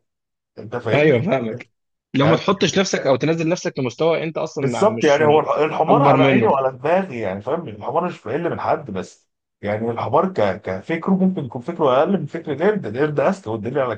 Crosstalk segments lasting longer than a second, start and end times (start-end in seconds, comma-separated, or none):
4.6-6.6